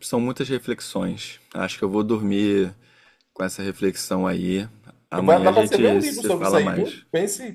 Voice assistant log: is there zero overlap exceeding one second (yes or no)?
no